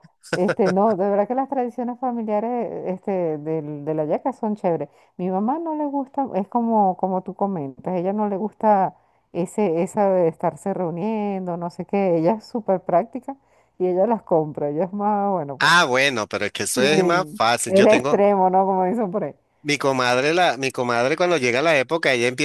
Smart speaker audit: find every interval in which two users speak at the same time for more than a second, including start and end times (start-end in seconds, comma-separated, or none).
16.8-18.2